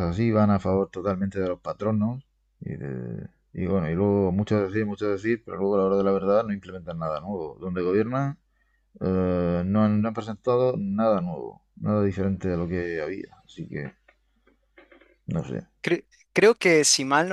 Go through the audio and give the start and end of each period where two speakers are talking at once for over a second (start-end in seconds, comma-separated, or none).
none